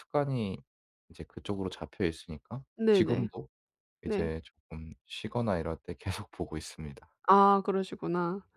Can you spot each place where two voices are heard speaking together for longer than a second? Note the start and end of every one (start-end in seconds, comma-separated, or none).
none